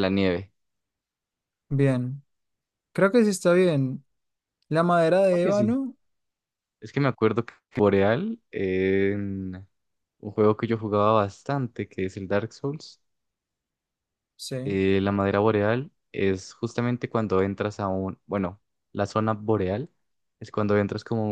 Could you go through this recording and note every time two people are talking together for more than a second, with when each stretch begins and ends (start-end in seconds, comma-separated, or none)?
none